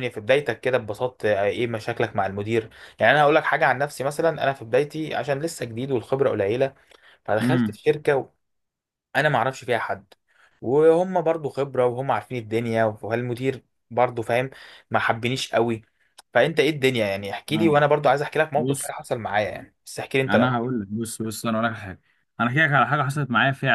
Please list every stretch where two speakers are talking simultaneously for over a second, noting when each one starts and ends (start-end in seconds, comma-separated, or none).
none